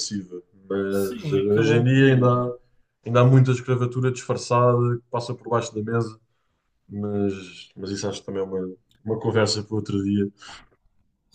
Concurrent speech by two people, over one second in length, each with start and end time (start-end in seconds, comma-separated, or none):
0.9-2.4